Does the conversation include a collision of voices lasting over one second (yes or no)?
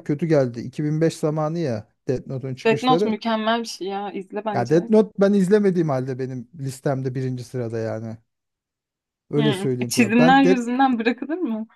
yes